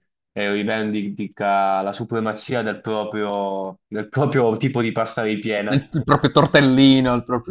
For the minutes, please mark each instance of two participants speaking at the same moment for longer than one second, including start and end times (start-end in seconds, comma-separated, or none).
none